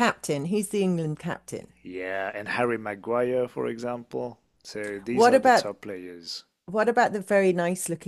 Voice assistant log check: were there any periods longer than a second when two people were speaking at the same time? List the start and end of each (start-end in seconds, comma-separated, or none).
none